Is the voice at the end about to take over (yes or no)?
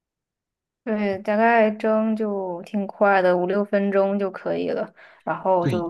no